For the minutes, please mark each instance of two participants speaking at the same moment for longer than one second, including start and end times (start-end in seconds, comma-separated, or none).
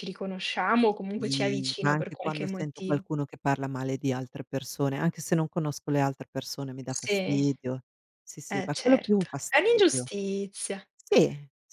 1.2-3.0, 8.5-10.1